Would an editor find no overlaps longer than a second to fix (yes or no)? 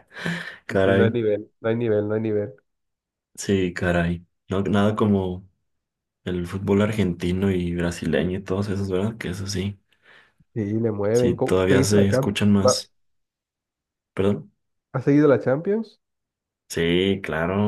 no